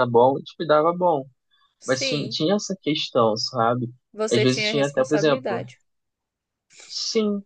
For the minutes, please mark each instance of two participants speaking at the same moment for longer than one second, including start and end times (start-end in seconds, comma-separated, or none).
4.3-5.6